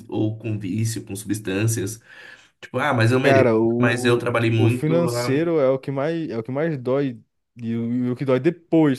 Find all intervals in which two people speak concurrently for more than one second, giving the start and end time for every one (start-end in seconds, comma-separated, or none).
3.2-5.4